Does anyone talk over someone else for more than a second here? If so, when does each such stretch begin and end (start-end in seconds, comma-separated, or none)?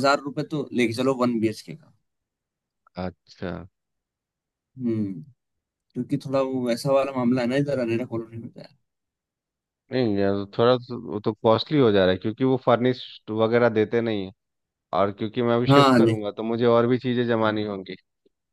none